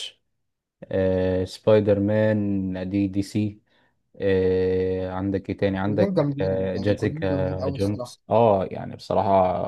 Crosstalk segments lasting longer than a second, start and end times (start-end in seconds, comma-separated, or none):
5.9-8.2